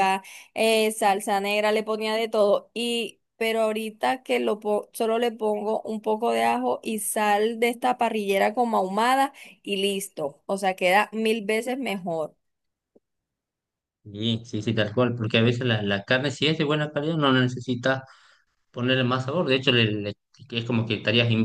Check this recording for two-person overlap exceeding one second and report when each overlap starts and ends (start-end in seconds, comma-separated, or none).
none